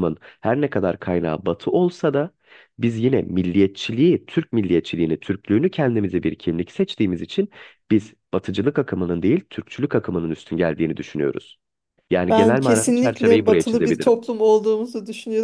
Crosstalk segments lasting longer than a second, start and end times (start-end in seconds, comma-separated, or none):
12.3-14.1